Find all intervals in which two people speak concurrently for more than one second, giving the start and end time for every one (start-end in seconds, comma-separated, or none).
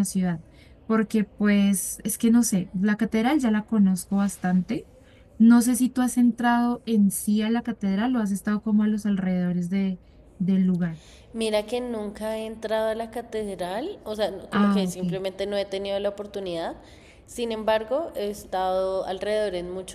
none